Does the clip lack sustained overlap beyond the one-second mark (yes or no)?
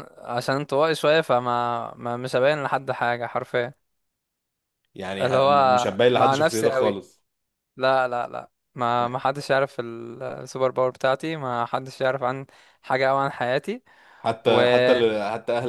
no